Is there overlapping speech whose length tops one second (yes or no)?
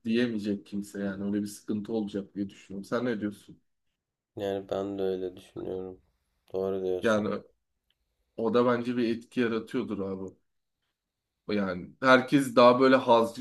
no